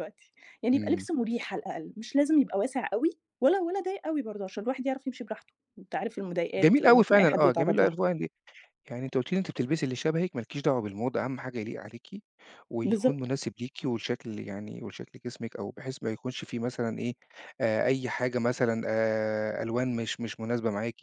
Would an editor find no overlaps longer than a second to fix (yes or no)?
no